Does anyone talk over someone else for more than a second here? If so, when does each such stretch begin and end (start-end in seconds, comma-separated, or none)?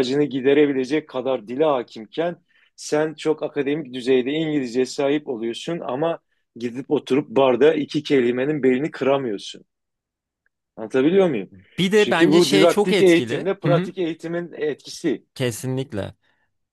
12.0-13.9